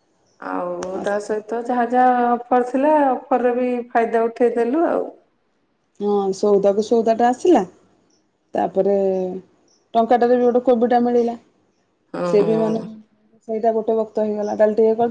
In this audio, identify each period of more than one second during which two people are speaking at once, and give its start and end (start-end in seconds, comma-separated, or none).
none